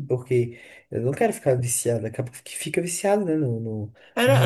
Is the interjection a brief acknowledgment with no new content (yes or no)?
no